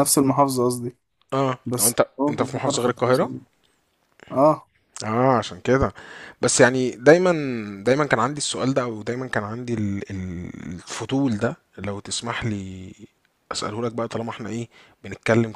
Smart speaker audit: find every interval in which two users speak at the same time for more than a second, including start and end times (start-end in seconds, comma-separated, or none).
1.6-3.3